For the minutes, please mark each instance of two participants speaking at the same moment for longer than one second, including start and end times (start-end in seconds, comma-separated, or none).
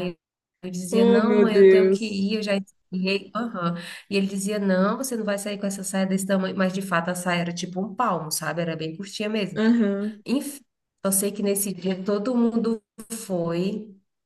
0.9-2.4